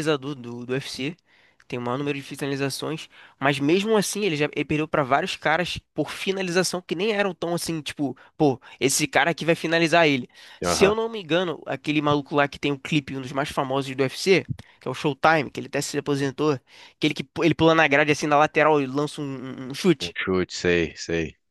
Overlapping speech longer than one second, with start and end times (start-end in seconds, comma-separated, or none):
none